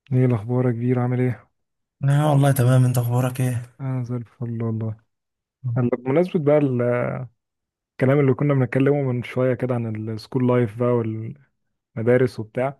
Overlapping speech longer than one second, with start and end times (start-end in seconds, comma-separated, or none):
none